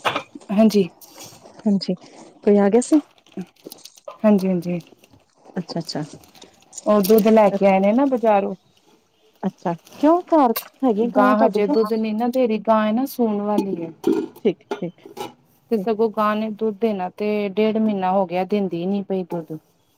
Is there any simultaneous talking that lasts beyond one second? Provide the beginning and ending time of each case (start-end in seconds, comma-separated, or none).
none